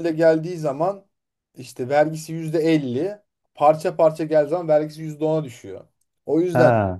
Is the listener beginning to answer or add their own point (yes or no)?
no